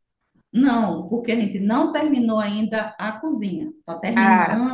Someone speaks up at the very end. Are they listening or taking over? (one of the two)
listening